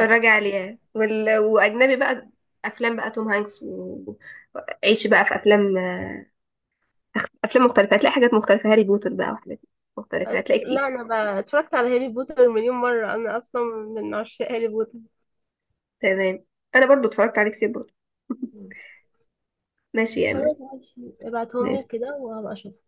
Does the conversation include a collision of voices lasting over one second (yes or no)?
no